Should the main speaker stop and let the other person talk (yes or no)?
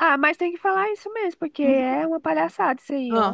yes